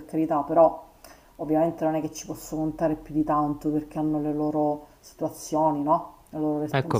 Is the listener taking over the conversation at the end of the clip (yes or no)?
yes